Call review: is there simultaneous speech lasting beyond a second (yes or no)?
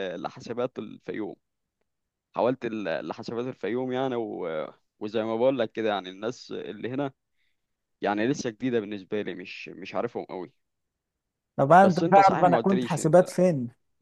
yes